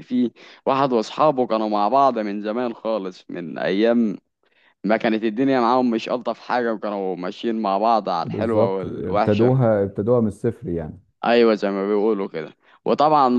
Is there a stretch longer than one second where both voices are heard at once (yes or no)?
yes